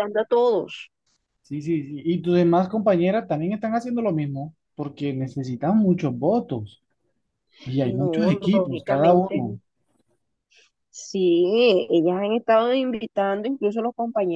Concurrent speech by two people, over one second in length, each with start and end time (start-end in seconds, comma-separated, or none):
7.8-9.5